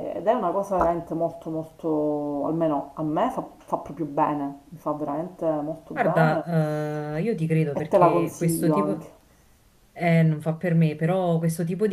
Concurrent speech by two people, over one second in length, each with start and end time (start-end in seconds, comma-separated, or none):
7.7-9.1